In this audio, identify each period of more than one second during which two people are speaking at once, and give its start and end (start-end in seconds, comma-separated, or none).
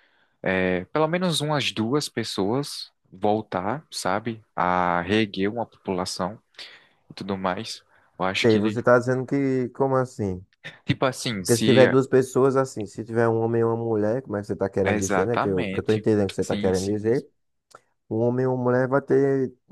14.8-17.1